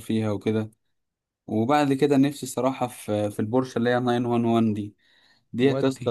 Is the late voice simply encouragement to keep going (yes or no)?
yes